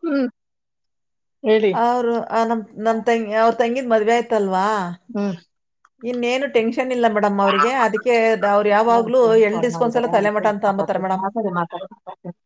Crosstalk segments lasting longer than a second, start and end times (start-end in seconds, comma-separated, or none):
8.9-11.2